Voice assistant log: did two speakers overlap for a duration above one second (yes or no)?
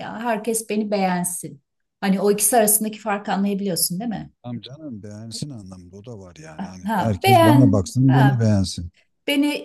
yes